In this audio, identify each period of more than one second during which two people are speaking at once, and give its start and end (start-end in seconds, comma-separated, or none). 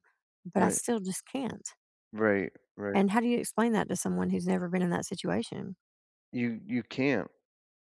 none